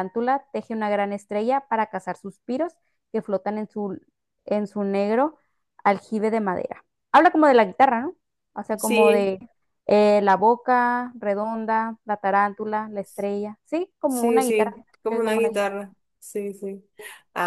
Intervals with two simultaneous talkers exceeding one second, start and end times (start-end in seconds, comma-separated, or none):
14.1-15.8